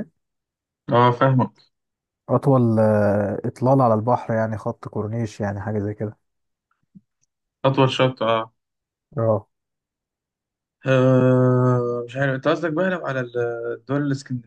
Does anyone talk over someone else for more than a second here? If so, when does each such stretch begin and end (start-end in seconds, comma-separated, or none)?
none